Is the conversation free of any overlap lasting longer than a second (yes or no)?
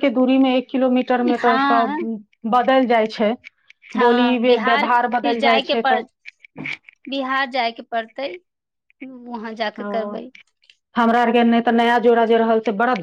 no